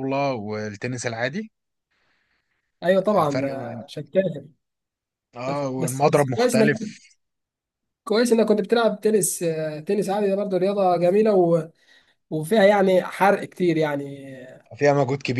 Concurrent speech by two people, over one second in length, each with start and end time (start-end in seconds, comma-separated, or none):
5.5-6.7